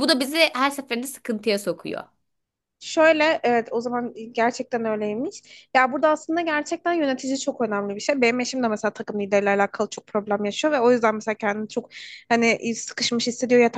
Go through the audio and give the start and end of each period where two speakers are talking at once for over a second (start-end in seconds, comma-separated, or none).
none